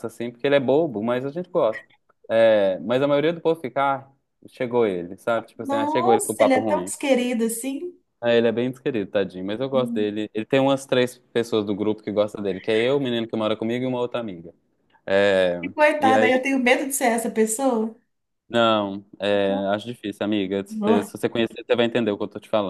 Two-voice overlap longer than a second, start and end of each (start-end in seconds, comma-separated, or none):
5.6-6.9